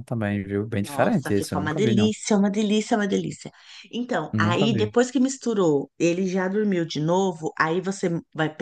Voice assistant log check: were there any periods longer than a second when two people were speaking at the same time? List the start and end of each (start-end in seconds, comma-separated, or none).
0.8-2.1